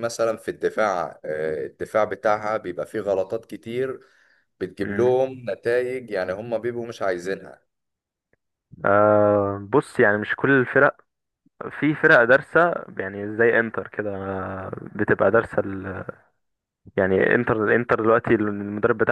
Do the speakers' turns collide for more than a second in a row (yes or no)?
no